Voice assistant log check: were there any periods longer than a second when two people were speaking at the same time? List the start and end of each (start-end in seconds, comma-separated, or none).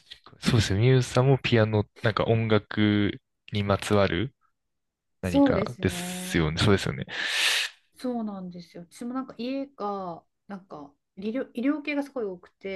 5.2-6.5